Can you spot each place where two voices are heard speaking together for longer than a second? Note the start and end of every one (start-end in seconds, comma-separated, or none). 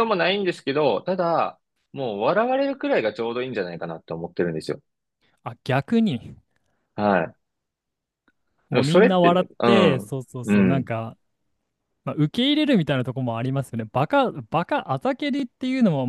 8.7-10.9